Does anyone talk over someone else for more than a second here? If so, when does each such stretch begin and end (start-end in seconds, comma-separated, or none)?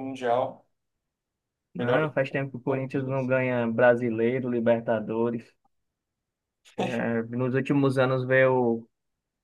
1.8-3.3